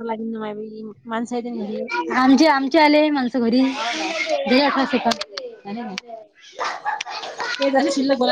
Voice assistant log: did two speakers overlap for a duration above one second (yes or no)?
no